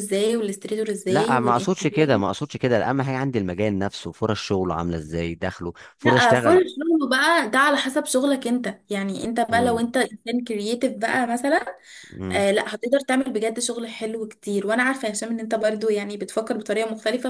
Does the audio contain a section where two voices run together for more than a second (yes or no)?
yes